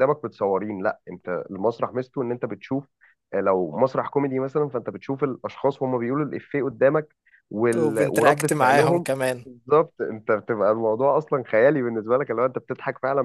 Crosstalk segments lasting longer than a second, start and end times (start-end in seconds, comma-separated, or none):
7.8-9.1